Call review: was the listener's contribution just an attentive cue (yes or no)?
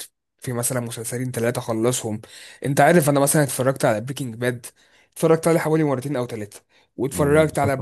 yes